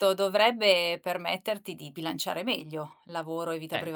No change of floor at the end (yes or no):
no